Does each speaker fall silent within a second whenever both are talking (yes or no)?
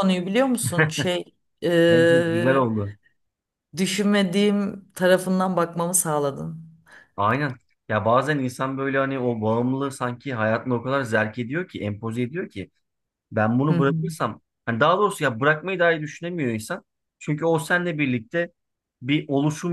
yes